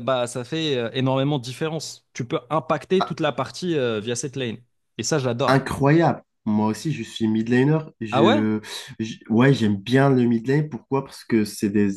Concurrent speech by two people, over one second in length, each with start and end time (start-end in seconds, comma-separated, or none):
none